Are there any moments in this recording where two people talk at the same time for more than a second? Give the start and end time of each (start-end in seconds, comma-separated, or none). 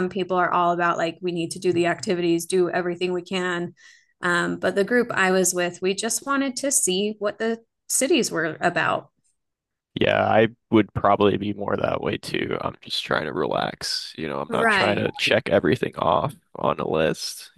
none